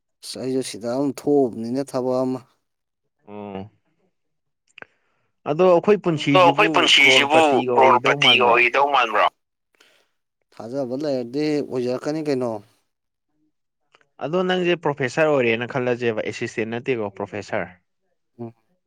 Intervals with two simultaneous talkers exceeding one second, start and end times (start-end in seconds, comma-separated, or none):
6.1-8.6